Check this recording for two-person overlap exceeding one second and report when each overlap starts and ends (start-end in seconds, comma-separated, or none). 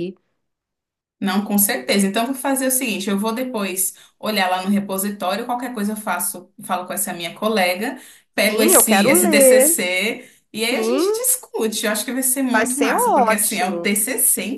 8.5-9.8, 12.5-13.9